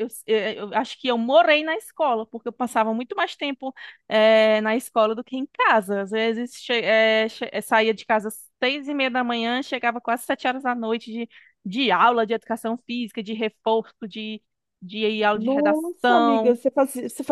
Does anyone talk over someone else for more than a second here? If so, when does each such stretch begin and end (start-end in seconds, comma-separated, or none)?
15.3-16.6